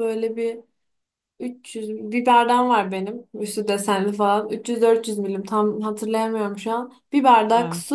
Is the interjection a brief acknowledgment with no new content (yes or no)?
yes